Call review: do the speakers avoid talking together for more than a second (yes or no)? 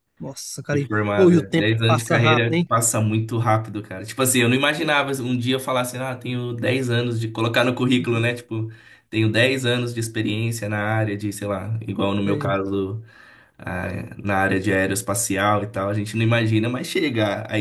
no